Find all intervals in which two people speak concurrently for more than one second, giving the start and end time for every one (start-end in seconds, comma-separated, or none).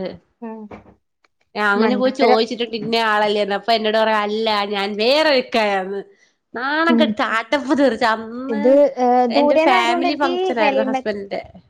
9.4-11.1